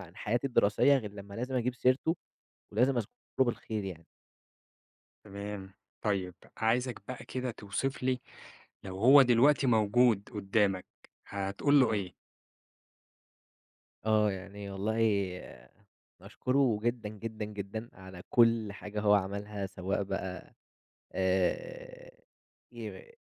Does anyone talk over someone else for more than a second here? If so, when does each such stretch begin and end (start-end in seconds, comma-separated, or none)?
none